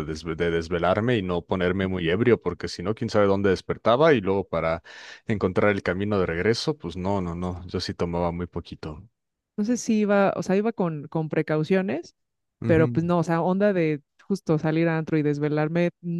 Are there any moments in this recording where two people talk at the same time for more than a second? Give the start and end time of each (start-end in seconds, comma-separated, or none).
none